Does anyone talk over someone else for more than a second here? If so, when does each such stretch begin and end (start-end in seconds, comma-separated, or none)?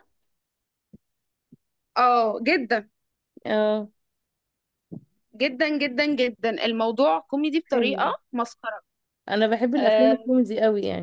none